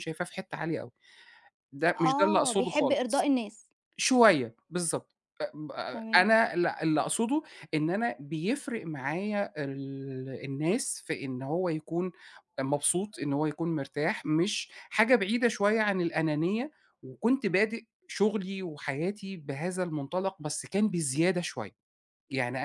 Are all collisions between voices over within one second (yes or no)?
no